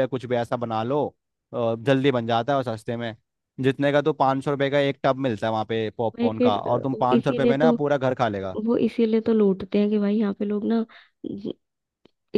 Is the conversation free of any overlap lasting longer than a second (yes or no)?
no